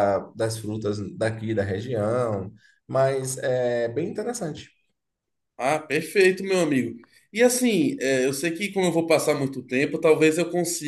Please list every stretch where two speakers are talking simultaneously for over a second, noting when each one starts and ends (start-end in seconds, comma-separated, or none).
none